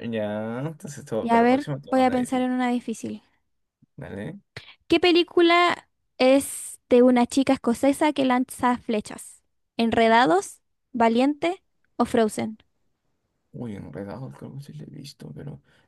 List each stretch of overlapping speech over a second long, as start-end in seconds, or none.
1.2-2.5